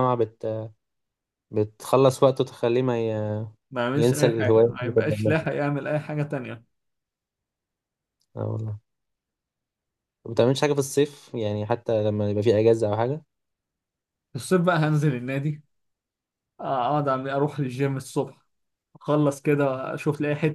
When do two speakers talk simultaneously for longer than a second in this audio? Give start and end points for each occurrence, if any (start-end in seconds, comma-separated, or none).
3.9-5.5